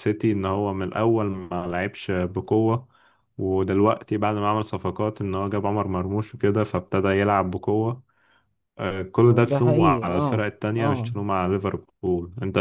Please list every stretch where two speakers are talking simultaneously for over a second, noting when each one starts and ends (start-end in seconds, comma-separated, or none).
9.2-11.1